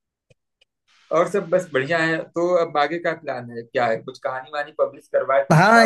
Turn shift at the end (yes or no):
yes